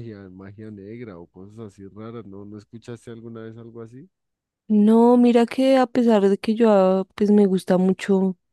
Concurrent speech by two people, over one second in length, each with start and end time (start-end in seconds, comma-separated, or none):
none